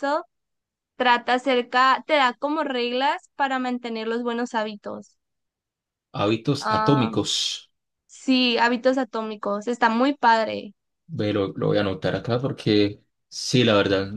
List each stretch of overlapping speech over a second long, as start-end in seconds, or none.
none